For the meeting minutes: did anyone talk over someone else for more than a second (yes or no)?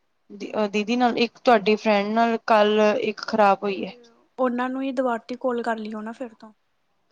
no